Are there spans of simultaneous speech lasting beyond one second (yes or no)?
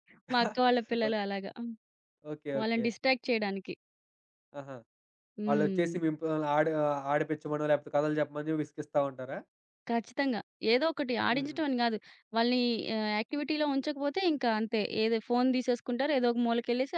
no